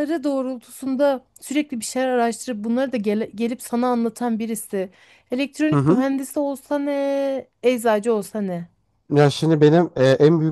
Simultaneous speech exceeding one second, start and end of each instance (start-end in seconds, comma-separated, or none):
none